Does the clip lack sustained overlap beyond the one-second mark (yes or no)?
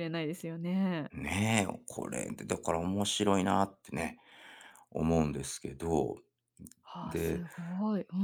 yes